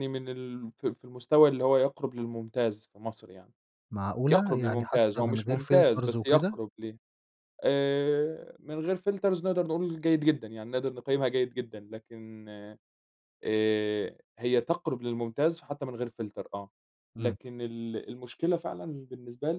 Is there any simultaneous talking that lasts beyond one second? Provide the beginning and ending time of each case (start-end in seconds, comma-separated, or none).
4.3-6.6